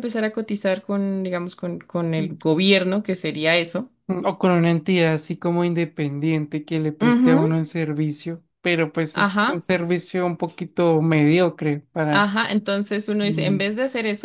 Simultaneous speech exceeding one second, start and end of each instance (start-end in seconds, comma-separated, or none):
none